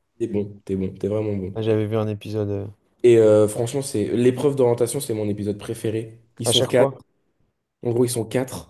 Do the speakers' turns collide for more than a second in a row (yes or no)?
no